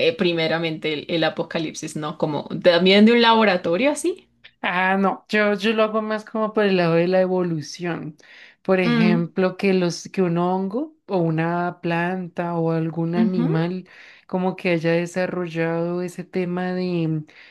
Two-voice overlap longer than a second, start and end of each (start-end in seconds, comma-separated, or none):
none